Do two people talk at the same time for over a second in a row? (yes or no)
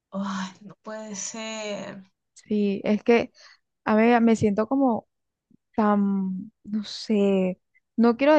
no